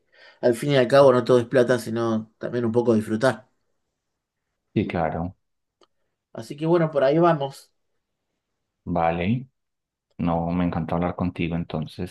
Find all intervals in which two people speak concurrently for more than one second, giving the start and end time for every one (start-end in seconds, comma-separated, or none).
none